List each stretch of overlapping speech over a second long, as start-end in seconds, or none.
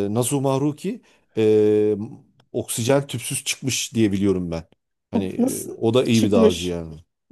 5.1-6.8